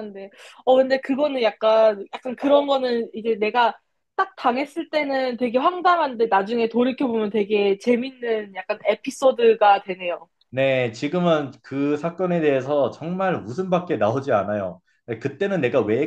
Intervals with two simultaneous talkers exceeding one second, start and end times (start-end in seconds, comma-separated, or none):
none